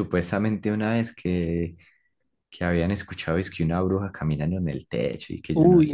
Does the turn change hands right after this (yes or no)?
yes